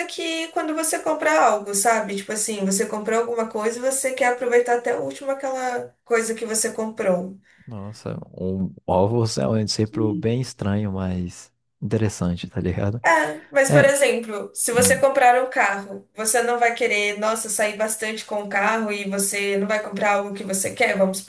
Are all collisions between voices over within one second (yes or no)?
yes